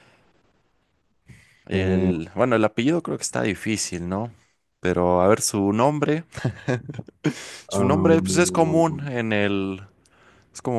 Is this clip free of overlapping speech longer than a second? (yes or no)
no